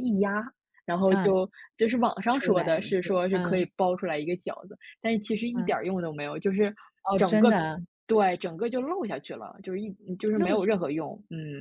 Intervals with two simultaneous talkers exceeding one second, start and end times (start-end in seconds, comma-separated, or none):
2.3-3.7